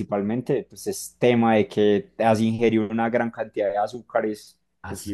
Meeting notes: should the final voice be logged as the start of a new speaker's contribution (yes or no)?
no